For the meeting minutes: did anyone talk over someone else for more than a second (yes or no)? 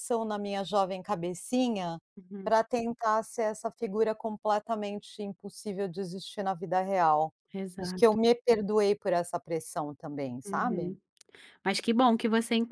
no